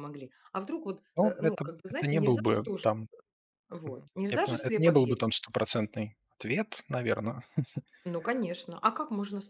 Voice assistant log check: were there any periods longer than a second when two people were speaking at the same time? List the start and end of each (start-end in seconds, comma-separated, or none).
1.2-2.9, 3.9-5.4